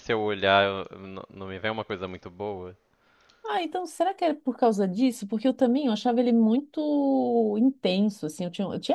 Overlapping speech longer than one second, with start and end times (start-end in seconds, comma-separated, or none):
none